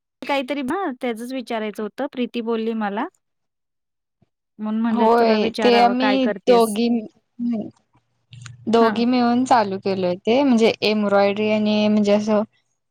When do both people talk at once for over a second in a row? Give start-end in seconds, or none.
4.9-6.8